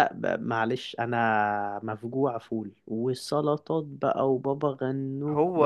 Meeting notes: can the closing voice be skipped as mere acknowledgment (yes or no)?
no